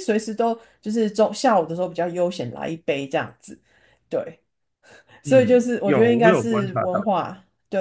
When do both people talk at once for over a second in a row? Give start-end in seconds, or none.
5.2-7.0